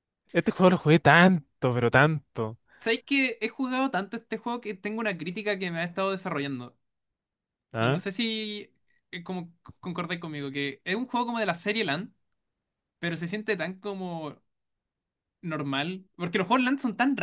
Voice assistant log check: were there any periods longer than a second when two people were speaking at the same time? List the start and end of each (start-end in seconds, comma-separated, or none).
none